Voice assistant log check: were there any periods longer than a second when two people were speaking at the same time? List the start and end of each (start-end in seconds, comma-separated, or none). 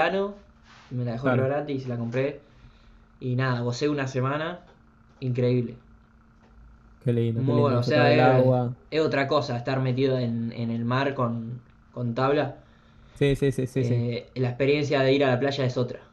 7.3-8.5